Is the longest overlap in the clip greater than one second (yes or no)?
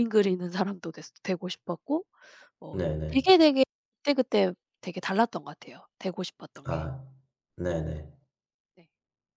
no